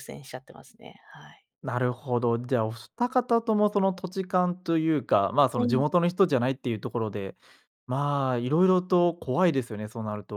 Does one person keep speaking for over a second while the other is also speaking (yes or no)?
no